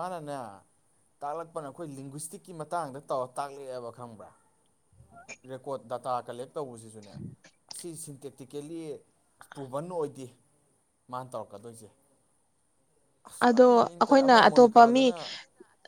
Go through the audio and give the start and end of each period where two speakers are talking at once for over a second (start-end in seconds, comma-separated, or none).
13.4-15.1